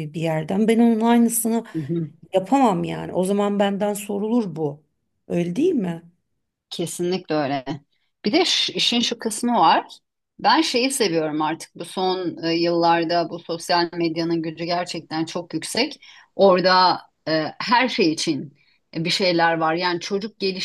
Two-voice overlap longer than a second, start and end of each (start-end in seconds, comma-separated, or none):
none